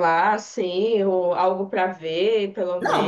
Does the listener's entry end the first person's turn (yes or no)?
yes